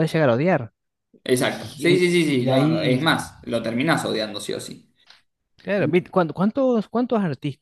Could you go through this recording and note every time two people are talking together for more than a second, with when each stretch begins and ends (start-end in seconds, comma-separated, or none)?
1.4-3.0